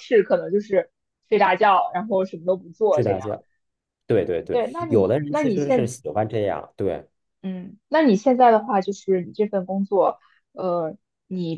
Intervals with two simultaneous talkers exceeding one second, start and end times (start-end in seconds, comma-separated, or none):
4.5-5.9